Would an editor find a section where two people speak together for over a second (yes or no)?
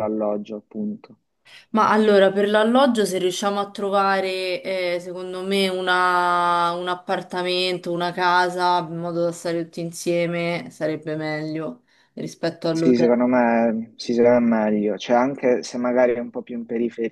no